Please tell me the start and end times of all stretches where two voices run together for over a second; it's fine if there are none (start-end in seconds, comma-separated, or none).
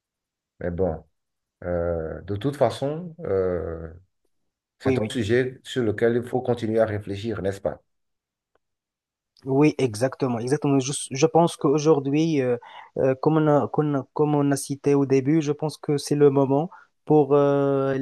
none